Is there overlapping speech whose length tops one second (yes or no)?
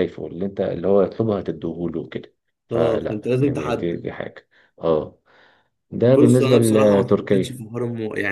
yes